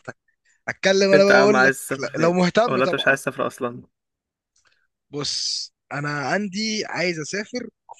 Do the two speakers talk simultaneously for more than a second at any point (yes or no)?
yes